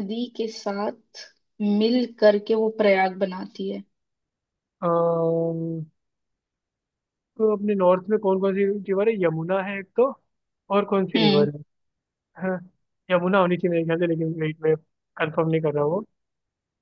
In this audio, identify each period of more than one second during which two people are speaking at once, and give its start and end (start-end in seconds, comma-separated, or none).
none